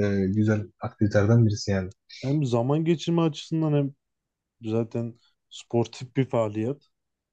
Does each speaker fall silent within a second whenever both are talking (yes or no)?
yes